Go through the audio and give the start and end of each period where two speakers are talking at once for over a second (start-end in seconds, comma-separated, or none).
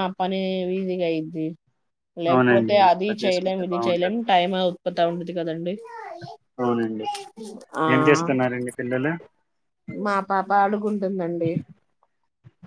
2.3-4.2